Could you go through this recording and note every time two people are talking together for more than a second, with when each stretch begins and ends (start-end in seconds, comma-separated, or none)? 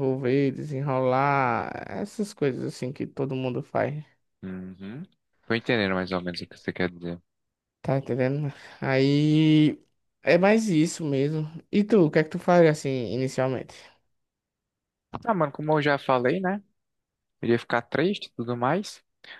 none